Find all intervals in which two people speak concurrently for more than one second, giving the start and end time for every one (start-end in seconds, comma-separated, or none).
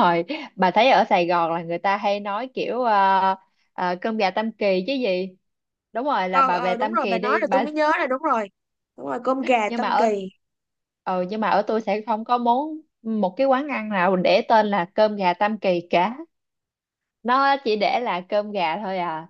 6.3-7.6